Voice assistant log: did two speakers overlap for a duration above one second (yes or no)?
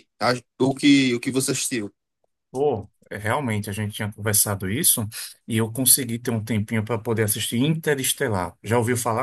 no